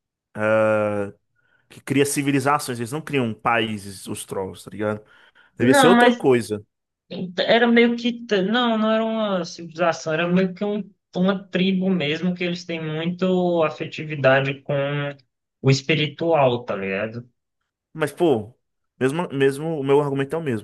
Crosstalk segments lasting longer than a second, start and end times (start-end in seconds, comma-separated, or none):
none